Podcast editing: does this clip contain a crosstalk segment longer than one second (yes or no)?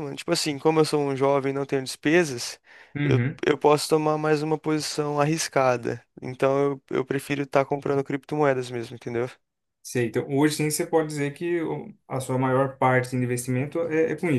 no